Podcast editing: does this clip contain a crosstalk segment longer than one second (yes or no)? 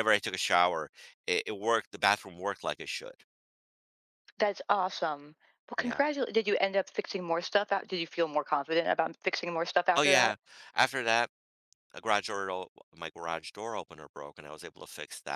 no